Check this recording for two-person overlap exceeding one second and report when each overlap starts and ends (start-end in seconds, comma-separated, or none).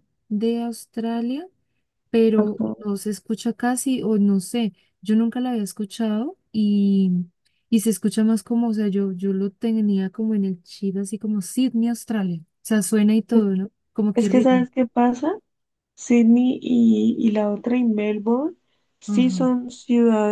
none